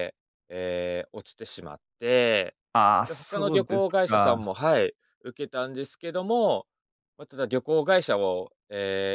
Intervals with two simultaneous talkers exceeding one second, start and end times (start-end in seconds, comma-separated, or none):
3.1-4.3